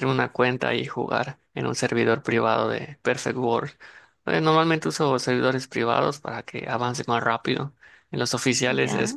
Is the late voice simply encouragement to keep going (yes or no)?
yes